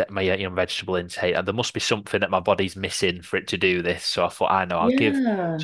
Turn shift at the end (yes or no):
no